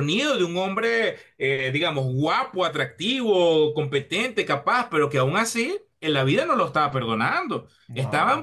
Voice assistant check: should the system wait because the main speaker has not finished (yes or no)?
yes